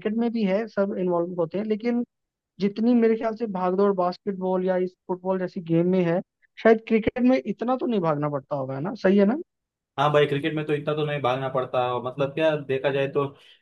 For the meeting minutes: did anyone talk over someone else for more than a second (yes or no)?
no